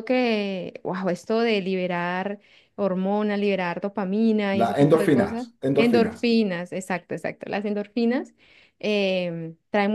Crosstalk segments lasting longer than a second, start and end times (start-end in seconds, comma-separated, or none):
4.5-6.3